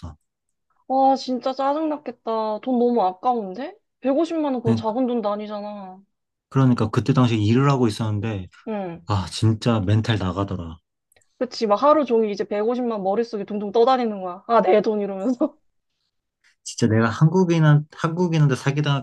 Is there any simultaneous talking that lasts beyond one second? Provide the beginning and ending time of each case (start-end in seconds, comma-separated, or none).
none